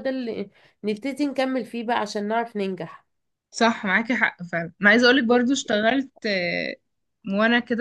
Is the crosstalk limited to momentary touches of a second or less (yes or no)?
yes